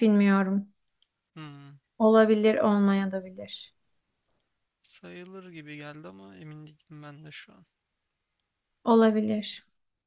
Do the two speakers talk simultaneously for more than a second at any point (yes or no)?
no